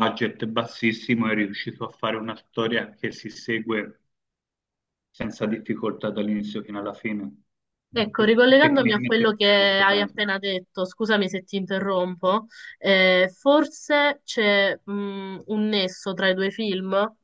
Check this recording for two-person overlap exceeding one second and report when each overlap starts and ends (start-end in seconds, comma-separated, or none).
8.6-10.2